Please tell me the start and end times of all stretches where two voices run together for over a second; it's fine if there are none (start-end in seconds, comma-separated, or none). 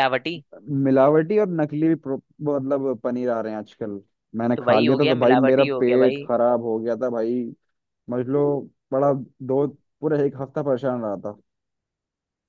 4.6-6.3